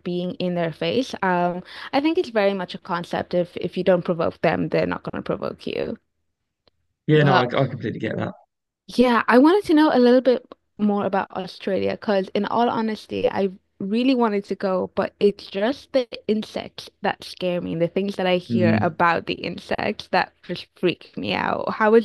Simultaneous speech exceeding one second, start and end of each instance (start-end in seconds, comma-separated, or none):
none